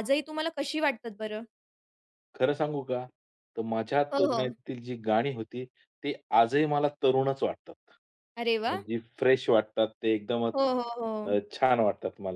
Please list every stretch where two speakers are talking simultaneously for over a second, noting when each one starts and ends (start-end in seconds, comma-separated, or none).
none